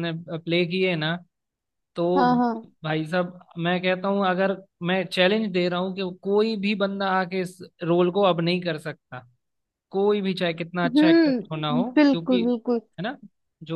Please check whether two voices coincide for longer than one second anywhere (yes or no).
yes